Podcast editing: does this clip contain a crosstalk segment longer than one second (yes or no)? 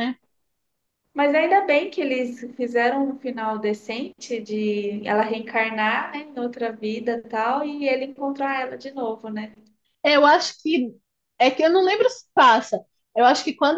no